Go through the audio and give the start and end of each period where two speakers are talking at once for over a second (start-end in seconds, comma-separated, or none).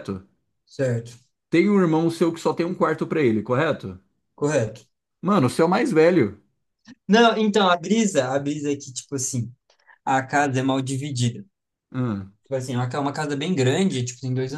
none